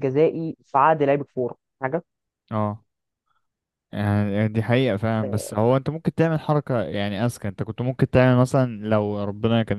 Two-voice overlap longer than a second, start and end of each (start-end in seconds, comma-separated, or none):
none